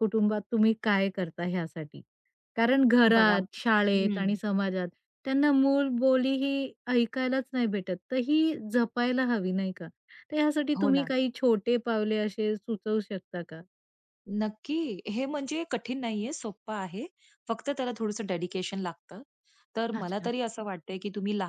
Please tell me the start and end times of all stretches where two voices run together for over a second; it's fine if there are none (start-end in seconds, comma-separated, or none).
3.1-4.3